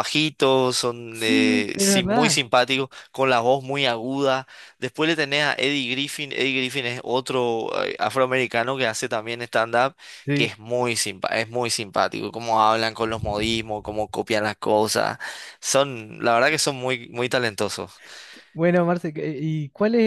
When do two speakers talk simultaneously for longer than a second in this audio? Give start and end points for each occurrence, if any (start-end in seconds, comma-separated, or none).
1.1-2.4